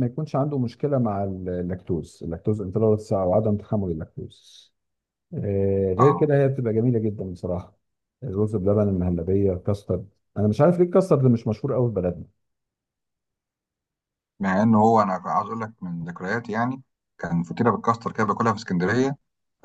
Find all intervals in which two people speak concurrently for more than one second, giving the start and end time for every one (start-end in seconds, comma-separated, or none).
none